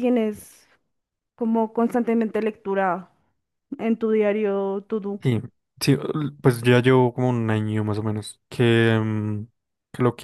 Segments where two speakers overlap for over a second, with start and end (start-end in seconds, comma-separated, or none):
none